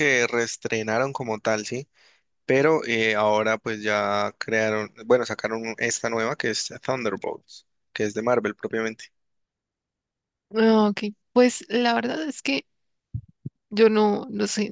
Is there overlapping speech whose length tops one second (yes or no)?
no